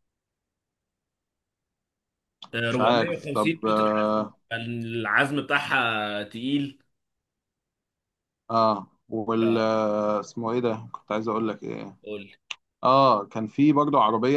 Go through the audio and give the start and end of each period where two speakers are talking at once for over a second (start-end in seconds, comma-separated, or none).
2.7-4.4